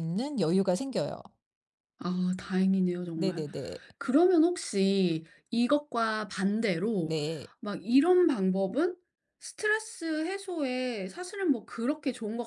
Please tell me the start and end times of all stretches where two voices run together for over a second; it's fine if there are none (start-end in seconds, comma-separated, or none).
none